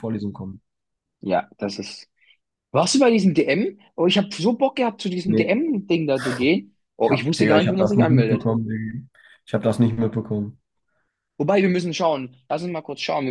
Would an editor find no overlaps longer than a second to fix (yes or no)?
no